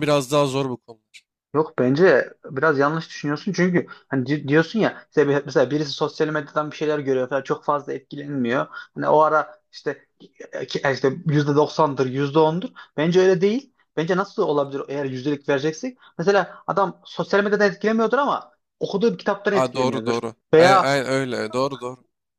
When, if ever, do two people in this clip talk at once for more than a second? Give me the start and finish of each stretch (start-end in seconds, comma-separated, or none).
19.5-21.0